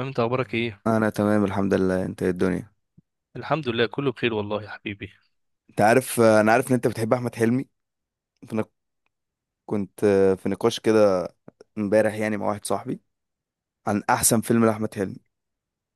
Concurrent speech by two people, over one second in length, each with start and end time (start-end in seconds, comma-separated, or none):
none